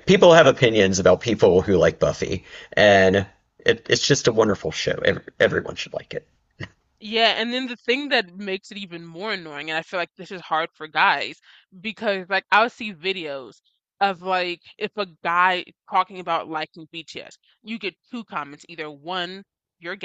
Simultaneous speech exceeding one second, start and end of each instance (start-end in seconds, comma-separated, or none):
none